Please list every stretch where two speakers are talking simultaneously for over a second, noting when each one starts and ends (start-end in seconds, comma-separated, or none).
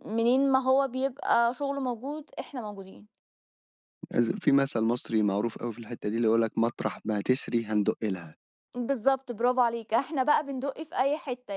none